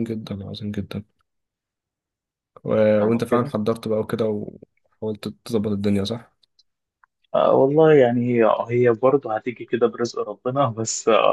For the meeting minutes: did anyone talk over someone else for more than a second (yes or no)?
no